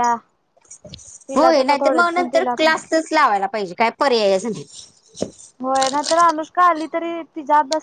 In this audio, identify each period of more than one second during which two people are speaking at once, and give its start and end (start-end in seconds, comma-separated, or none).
1.4-2.7